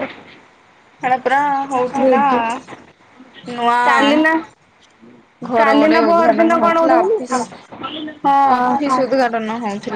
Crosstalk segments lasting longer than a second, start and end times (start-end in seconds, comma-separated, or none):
5.6-7.3